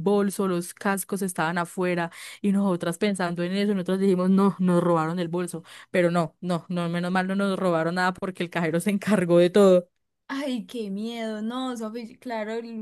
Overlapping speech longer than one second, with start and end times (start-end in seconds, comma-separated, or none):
none